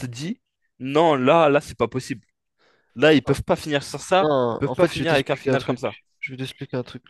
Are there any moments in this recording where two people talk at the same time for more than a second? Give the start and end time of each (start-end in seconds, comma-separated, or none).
4.2-6.0